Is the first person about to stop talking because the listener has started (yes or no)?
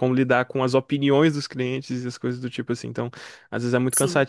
no